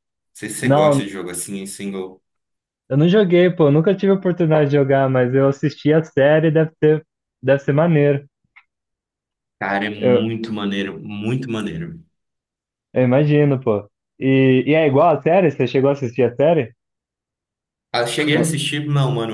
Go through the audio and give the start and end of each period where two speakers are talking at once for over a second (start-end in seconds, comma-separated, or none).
none